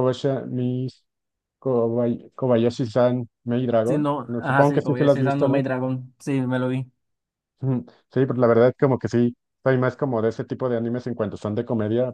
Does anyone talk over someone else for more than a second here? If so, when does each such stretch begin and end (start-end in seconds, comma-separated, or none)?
3.8-5.6